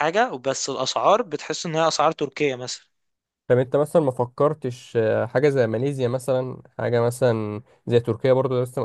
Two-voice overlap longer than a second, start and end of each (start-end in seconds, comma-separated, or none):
none